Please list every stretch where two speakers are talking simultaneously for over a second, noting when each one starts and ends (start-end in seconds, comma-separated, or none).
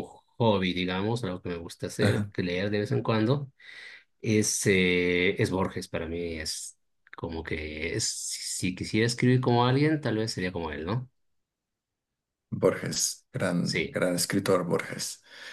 none